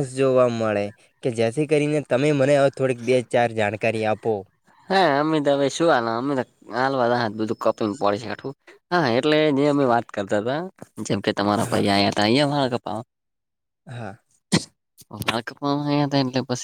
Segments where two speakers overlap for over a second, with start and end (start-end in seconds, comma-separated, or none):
none